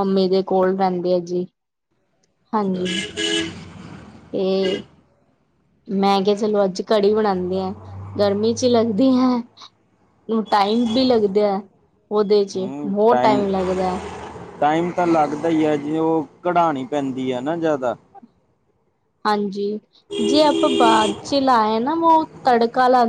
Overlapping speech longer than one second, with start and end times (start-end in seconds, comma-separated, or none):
none